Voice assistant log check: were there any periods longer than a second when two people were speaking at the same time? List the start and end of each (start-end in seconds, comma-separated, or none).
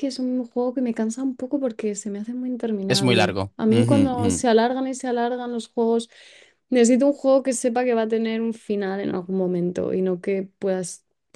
2.9-4.5